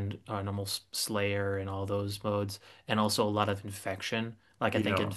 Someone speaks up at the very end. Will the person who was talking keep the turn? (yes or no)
yes